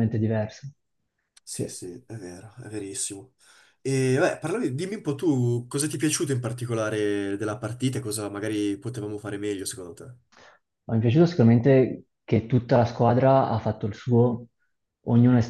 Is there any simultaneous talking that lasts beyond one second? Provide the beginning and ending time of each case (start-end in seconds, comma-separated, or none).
none